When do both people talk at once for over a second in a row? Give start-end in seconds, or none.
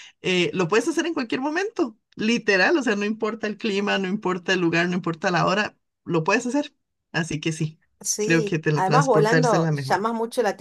8.2-10.0